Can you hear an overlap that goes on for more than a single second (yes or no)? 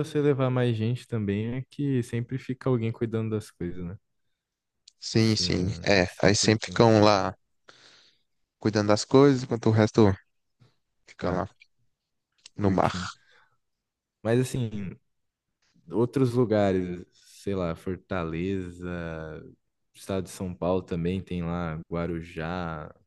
yes